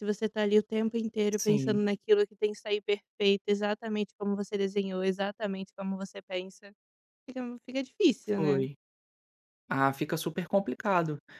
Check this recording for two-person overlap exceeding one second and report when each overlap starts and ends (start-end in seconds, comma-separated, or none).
none